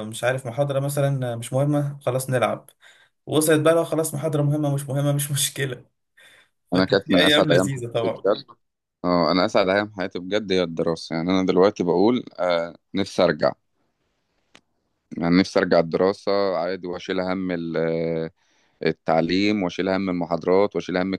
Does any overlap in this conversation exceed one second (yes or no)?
yes